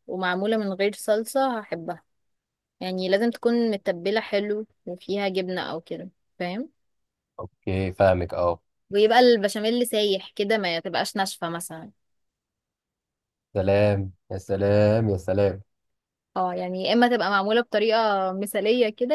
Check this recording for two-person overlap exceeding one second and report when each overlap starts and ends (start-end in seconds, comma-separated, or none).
none